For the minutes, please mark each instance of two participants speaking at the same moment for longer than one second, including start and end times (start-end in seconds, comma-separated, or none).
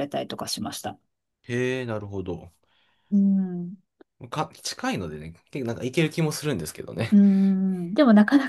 none